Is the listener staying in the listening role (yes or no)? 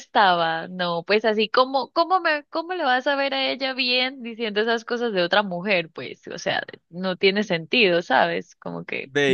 no